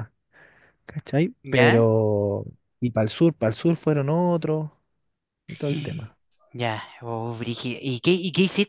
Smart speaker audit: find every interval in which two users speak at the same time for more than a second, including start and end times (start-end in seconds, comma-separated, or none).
none